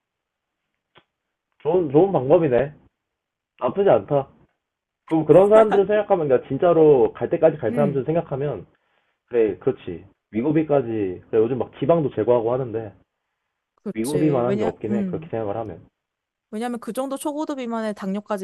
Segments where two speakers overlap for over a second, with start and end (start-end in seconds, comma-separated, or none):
13.9-15.3